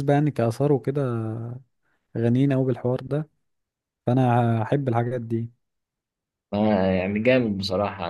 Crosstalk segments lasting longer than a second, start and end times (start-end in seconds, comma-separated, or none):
none